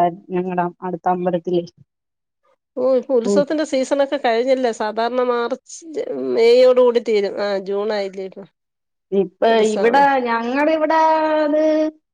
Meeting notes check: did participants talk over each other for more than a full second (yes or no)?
no